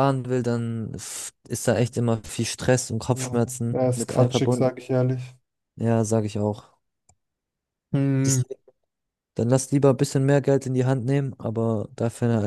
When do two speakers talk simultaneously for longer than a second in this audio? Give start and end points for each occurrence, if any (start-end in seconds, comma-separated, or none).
3.1-4.8